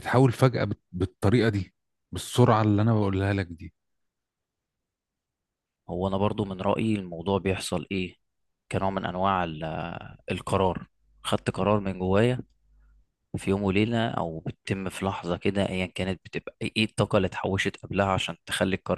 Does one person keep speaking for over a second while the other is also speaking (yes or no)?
no